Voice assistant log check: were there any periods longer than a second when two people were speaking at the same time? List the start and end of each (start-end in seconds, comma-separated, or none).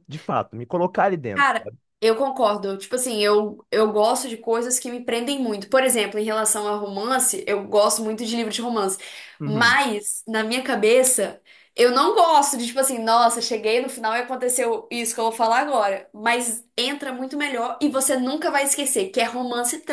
none